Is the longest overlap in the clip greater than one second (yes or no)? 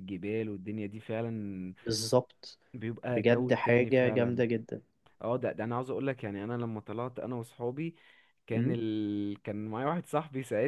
yes